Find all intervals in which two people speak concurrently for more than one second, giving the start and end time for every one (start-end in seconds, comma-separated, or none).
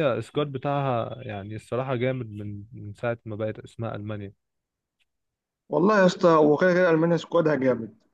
none